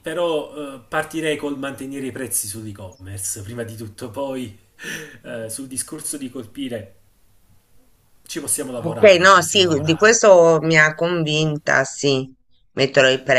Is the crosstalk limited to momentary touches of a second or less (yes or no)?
no